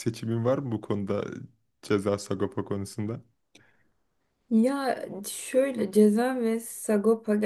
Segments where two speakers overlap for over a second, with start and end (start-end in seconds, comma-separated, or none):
none